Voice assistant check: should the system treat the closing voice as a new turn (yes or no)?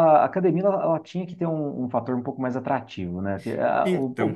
no